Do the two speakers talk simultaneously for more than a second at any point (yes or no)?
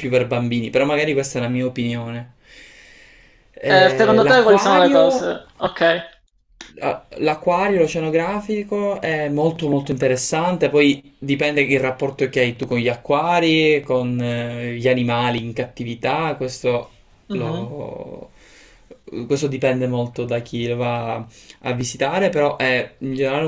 yes